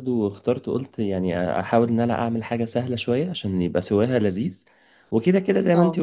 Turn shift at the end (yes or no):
no